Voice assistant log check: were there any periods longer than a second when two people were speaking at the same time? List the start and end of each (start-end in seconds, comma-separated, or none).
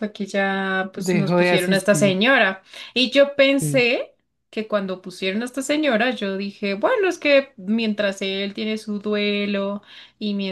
0.9-2.3